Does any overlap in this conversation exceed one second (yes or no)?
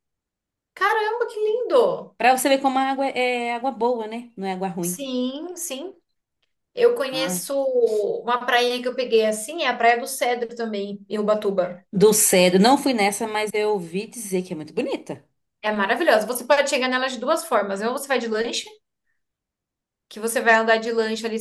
no